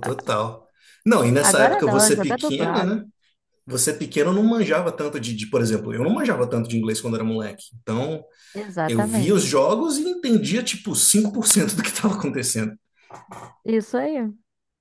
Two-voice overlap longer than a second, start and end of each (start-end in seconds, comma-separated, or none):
1.4-2.9